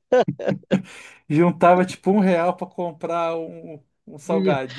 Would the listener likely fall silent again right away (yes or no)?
yes